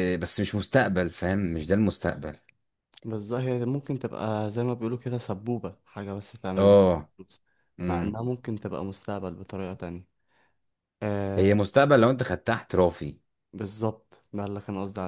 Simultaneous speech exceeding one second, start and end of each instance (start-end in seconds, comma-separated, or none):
none